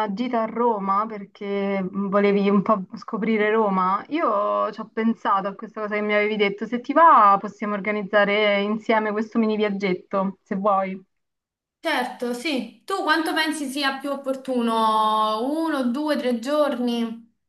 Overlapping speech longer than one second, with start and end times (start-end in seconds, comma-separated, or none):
none